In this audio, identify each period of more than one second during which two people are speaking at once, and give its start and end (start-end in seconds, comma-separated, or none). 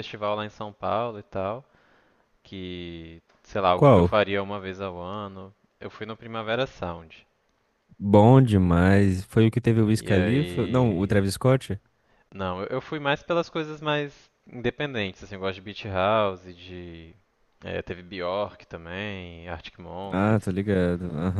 9.9-11.2